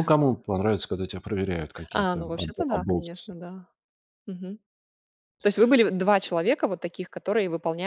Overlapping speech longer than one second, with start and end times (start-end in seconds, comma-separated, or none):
1.9-3.3